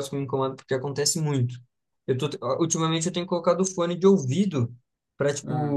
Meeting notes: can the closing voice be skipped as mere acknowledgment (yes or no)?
yes